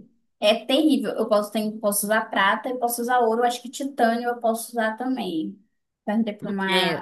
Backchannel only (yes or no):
no